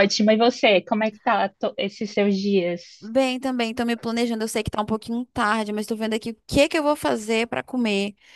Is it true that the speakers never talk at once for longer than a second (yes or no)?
yes